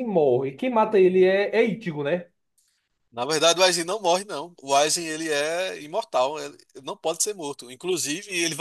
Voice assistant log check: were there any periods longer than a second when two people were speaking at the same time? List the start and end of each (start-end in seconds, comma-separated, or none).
none